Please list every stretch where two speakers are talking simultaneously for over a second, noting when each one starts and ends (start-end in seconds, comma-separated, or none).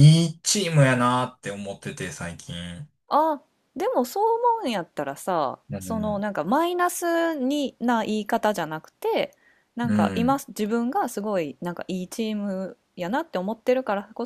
none